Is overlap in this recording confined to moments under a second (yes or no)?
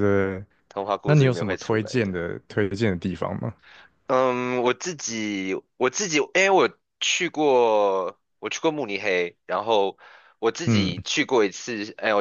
no